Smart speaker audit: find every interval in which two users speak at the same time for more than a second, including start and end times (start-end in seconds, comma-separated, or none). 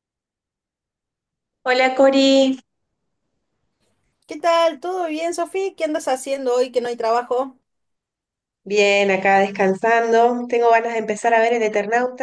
none